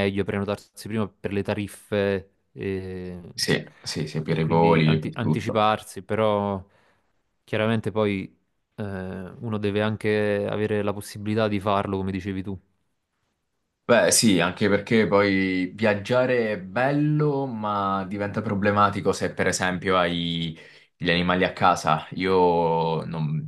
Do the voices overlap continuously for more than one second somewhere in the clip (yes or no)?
yes